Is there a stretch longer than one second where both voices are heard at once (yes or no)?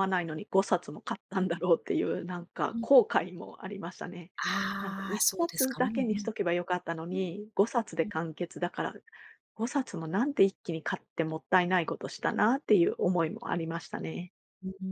yes